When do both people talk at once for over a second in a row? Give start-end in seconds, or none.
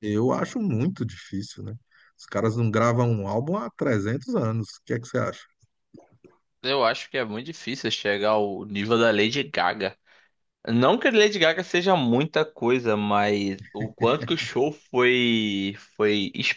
none